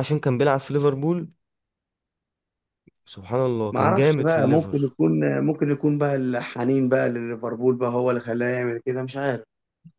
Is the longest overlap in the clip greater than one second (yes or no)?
yes